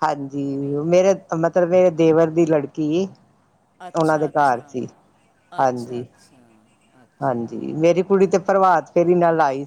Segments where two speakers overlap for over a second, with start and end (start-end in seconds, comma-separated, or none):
none